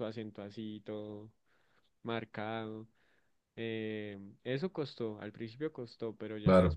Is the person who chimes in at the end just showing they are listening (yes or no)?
yes